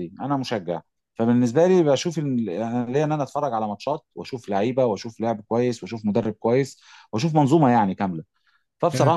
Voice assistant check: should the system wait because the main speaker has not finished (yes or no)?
yes